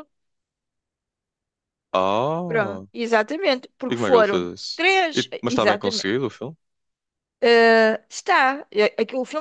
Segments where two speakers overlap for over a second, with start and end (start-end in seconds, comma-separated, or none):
3.9-6.1